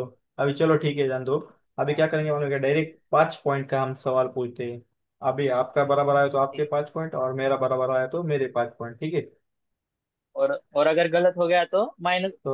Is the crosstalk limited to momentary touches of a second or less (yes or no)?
yes